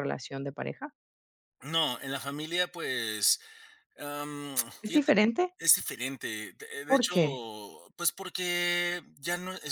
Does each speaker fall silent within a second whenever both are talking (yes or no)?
yes